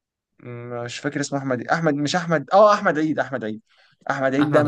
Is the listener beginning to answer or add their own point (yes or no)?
no